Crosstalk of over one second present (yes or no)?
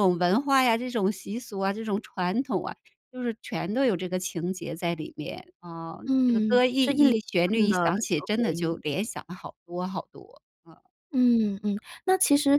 yes